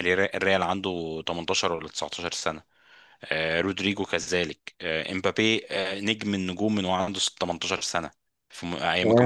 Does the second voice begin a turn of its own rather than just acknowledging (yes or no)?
yes